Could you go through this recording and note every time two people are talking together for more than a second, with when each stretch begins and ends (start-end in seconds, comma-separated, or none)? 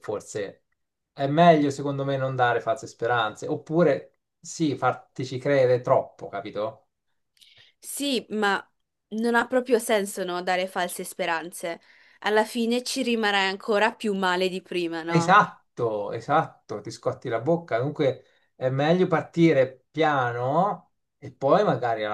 none